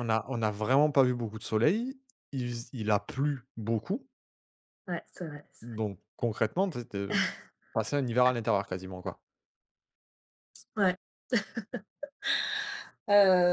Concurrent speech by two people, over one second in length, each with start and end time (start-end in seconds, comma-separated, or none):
none